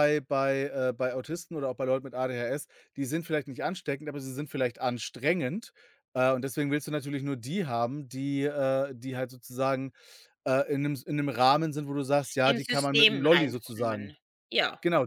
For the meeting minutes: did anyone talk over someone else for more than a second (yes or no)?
yes